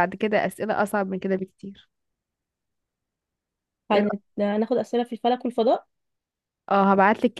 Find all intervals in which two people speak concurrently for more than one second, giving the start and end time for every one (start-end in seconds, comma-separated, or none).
none